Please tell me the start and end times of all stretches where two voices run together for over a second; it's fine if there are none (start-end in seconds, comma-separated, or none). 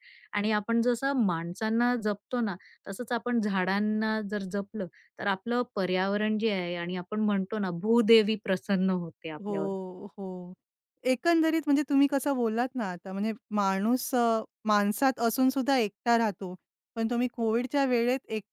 none